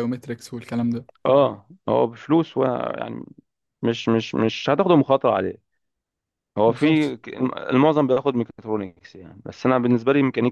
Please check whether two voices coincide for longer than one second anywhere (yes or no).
no